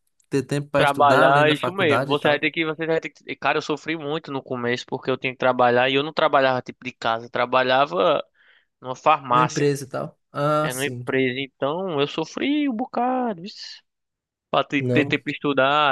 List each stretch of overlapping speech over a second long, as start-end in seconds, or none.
0.8-2.5